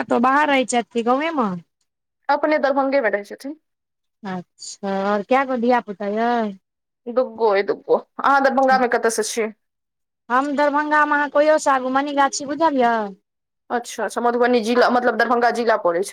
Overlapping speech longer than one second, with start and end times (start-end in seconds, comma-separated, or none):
none